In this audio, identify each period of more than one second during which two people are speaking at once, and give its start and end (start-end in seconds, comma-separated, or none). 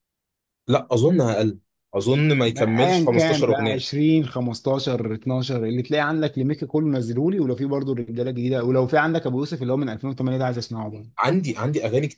2.4-3.9